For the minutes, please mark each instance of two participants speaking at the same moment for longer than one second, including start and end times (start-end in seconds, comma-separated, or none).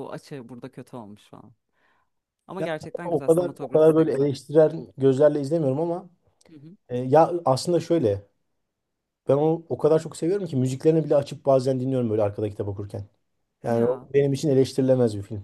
2.6-4.3